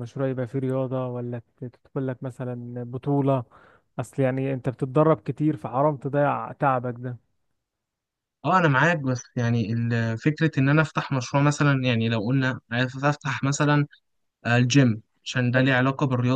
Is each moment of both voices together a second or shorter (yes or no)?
yes